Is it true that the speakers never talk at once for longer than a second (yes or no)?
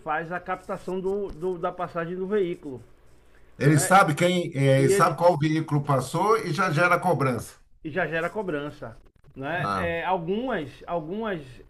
yes